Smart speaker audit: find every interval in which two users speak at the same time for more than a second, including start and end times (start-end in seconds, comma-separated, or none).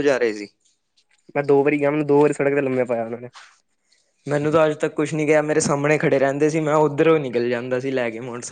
none